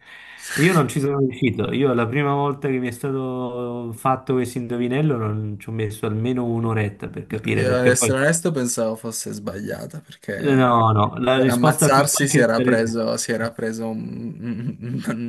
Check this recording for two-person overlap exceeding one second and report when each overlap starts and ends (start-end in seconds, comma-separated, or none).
11.4-12.9